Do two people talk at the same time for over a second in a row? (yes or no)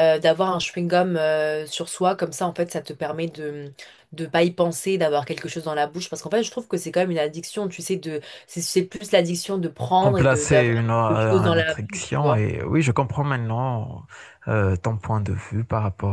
yes